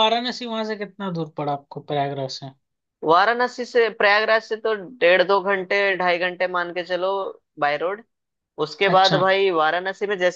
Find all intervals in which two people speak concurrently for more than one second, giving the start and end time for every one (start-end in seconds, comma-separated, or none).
none